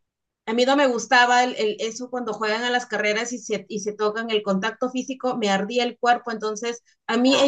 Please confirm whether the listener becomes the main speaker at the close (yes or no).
no